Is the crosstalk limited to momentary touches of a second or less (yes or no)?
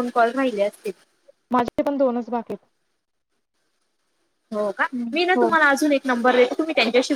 yes